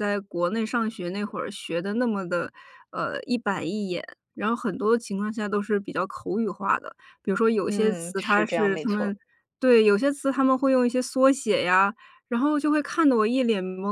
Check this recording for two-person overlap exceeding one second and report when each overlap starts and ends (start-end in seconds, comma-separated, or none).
7.6-9.2